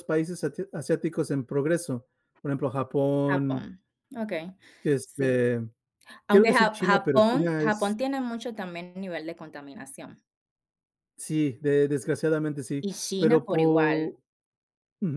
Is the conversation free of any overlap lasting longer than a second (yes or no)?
no